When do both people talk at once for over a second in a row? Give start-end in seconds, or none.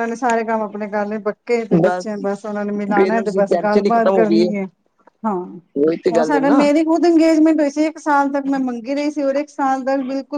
3.0-4.5